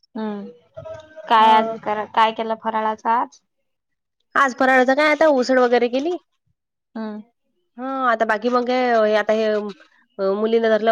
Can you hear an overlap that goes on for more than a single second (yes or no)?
no